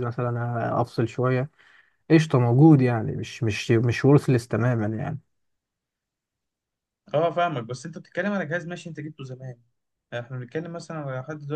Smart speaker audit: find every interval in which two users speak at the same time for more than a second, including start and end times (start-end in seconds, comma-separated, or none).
none